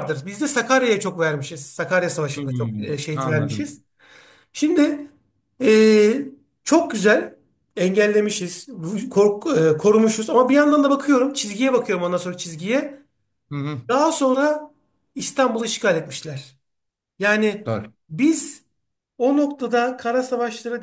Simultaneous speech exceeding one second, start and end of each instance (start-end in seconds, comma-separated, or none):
2.3-3.8